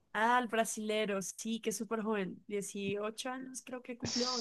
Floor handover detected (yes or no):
yes